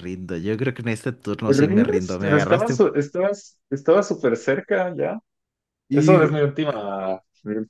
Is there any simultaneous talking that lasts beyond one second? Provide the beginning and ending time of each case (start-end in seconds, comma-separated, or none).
1.4-2.8